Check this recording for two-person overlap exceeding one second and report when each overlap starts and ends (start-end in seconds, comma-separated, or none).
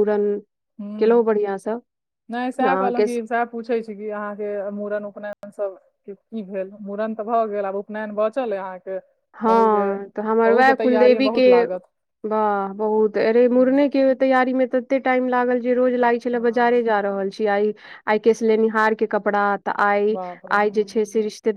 9.4-11.5